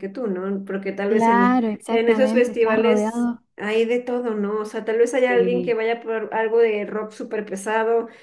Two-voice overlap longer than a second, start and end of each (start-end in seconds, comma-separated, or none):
1.1-3.4